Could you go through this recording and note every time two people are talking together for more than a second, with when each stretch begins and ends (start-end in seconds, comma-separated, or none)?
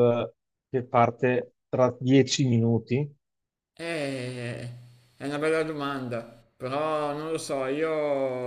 none